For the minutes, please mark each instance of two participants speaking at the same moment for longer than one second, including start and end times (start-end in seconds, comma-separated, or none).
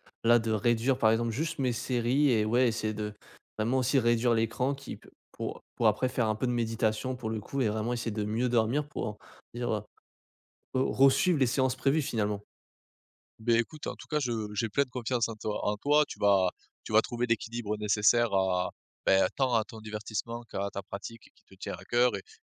none